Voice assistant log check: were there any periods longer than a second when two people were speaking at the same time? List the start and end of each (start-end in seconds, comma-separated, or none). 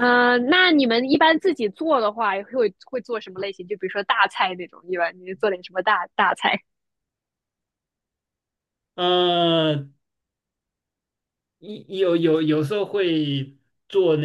none